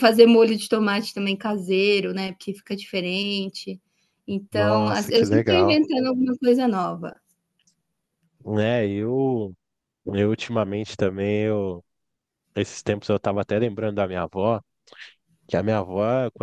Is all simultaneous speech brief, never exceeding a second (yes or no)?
no